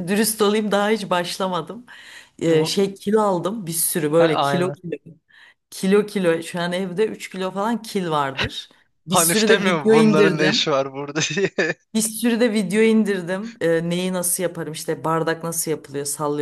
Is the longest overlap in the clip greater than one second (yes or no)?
yes